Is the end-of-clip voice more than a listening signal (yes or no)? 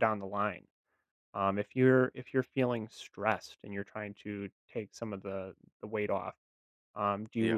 no